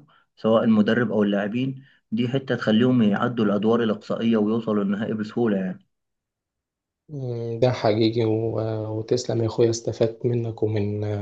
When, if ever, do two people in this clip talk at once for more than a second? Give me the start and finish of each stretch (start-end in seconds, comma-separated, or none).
none